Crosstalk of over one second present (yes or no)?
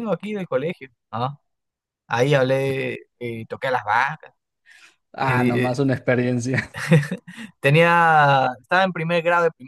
no